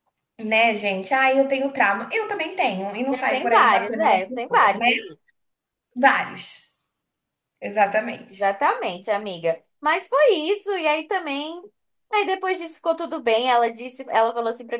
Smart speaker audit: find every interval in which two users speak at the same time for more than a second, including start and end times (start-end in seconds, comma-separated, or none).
3.1-4.9